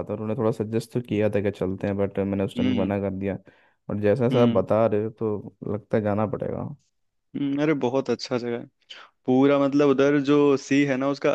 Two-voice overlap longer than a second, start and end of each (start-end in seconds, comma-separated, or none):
none